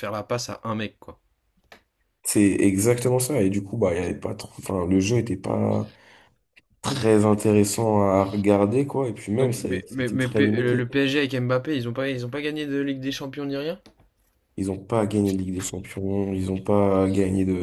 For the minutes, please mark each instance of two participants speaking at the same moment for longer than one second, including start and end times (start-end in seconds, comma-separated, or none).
9.4-10.9